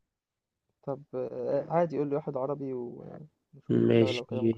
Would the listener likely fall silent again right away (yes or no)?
no